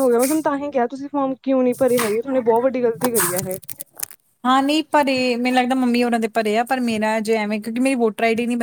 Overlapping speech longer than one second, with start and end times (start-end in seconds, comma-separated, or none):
none